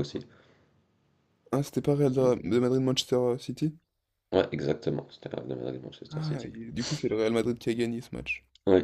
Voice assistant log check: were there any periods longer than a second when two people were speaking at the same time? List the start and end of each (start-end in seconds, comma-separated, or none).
none